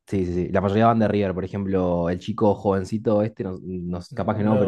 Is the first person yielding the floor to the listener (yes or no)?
no